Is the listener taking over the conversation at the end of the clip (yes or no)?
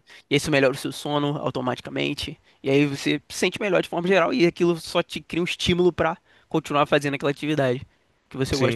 yes